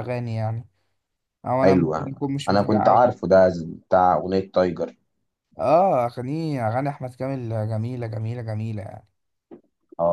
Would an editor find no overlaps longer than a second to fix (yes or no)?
no